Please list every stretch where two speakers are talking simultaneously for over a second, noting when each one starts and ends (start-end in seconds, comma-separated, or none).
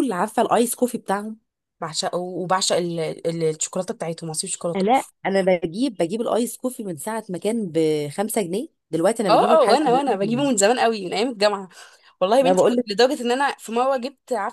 none